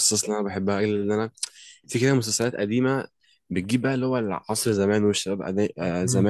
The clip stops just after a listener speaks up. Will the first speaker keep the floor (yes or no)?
yes